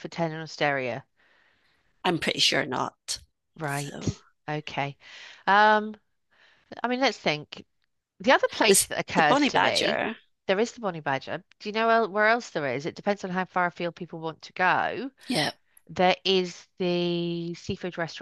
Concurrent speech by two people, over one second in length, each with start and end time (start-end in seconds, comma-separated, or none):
8.7-10.0